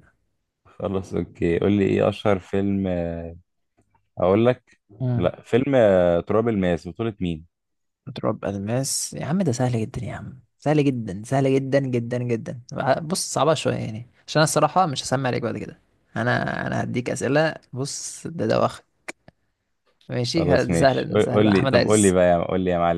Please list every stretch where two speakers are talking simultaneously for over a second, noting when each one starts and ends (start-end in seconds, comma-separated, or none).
20.4-22.2